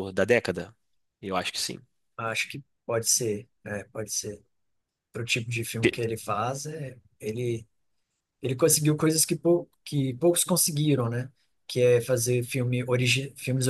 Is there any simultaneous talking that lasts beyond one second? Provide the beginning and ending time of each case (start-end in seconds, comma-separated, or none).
none